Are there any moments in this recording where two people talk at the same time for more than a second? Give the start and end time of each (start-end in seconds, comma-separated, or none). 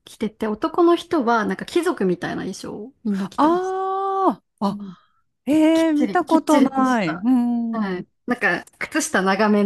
5.7-7.3